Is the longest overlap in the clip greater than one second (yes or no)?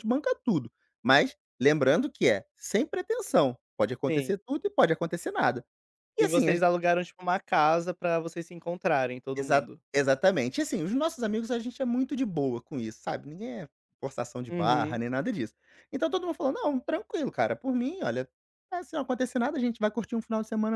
no